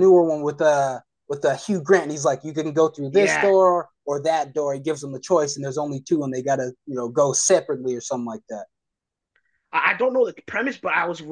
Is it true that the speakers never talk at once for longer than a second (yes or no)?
yes